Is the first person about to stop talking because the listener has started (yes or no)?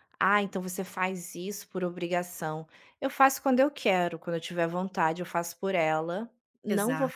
no